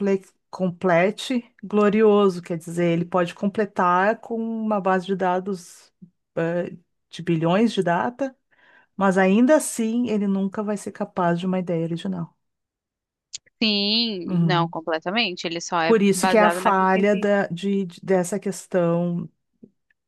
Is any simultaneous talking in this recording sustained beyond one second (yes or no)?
yes